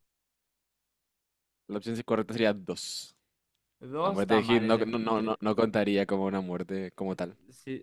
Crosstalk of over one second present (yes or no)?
yes